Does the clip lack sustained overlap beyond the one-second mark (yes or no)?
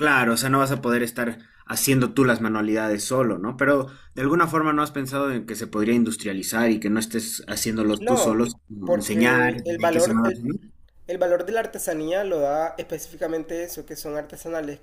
no